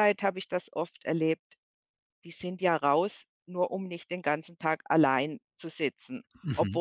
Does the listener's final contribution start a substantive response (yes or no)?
no